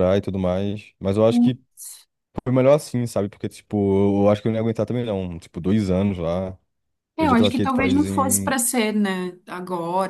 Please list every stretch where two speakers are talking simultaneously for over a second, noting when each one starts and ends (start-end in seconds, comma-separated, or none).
7.2-8.6